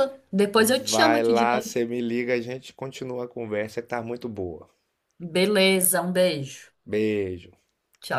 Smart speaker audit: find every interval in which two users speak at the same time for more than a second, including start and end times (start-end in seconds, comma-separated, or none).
0.6-1.8